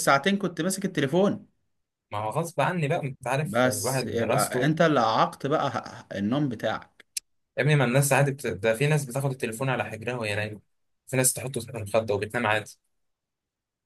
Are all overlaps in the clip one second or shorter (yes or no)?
no